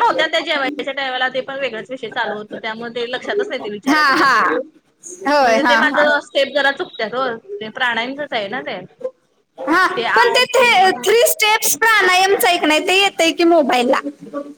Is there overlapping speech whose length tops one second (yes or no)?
no